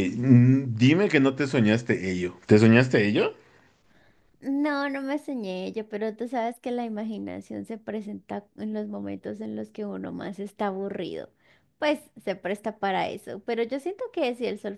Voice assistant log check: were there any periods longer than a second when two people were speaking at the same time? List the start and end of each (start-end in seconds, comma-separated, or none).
none